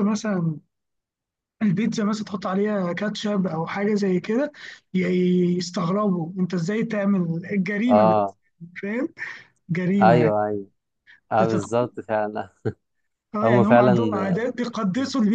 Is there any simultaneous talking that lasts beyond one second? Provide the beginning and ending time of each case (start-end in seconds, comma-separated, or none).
none